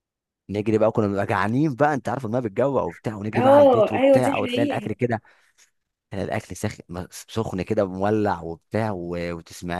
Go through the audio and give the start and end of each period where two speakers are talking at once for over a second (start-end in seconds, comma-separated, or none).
3.4-4.9